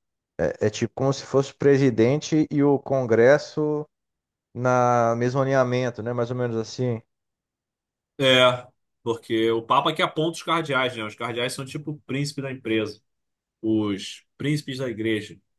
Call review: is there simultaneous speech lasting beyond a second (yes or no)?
no